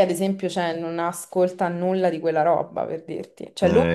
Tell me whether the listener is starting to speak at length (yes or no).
no